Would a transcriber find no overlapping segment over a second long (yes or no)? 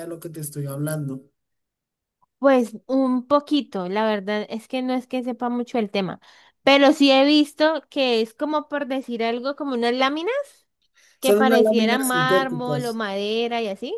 no